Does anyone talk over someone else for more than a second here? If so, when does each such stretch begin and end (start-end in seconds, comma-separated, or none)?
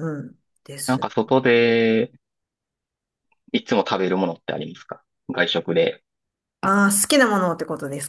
none